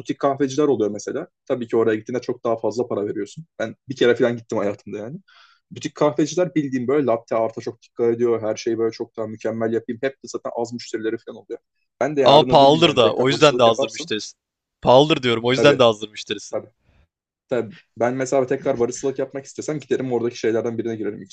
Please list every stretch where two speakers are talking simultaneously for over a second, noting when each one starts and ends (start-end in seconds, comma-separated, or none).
12.2-14.1